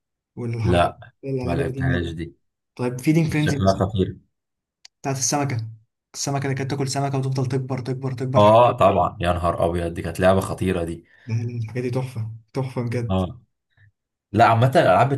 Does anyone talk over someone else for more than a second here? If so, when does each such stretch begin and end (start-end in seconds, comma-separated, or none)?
0.6-2.2